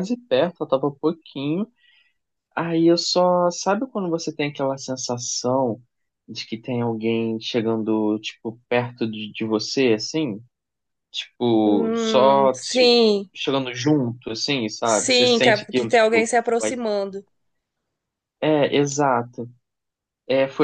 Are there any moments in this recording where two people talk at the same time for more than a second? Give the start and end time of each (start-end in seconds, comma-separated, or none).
11.6-12.9, 14.8-16.8